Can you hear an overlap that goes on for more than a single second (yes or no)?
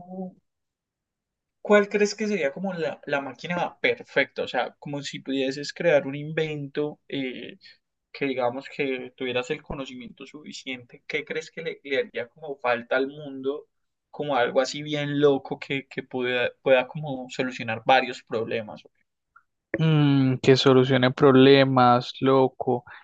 no